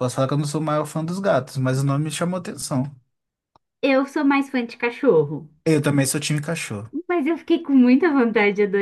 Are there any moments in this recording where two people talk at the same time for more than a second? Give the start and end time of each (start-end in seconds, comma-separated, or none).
none